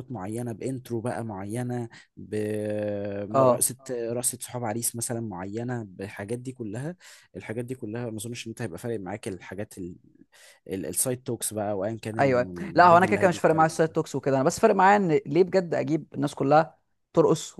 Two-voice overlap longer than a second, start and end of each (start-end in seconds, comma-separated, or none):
12.2-13.8